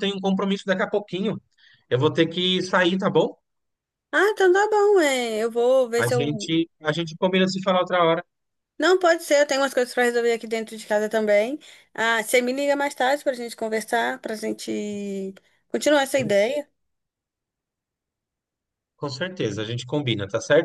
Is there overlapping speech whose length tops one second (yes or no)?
no